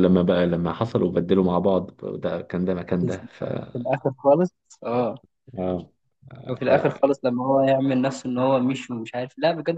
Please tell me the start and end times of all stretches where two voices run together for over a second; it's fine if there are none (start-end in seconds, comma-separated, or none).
none